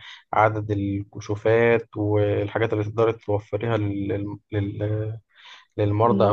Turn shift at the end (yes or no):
no